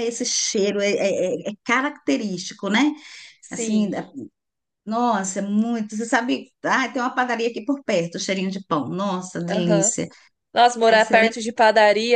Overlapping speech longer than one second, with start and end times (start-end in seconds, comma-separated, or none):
none